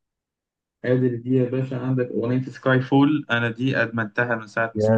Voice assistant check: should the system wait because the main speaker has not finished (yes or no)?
no